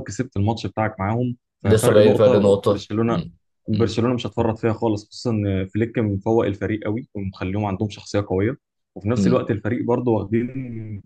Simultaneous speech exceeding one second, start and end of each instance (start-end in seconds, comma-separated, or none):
1.6-3.2